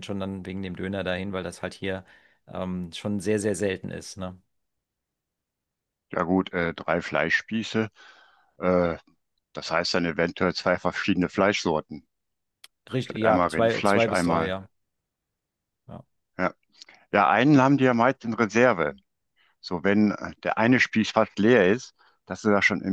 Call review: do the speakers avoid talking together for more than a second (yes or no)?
no